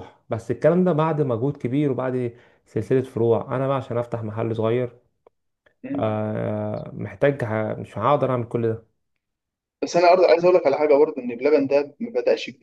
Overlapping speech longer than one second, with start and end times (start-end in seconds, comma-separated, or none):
none